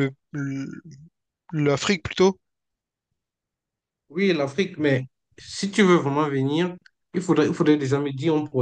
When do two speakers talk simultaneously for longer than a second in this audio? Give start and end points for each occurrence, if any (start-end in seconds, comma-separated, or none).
none